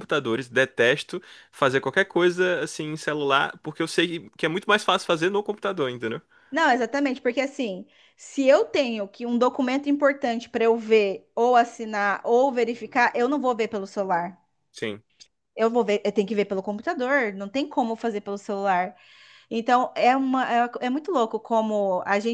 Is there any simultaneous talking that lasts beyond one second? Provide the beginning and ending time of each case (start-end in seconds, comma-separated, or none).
none